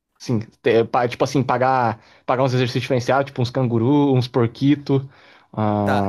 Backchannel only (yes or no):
no